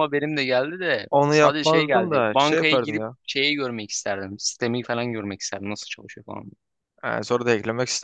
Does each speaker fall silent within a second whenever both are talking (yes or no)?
no